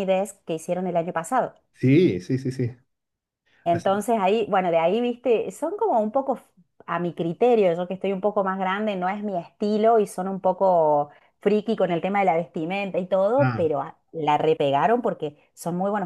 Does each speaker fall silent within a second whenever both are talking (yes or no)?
yes